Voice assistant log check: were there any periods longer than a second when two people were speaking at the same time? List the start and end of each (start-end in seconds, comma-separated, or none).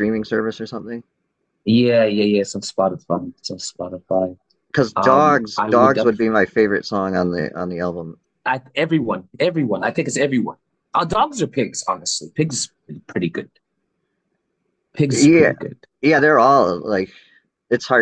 5.0-6.2